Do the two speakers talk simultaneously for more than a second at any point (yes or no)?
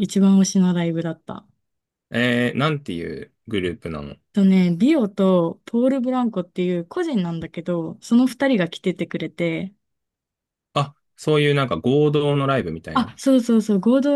no